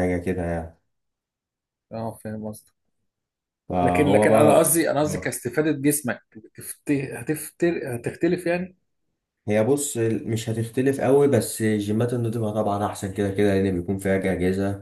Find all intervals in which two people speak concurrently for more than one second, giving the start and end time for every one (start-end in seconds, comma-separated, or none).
3.8-5.4